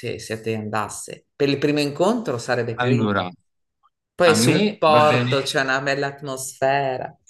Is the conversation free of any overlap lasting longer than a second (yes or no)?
no